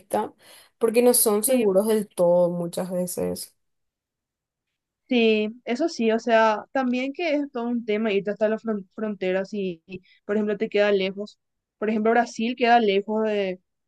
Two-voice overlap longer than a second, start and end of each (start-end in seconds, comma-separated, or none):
none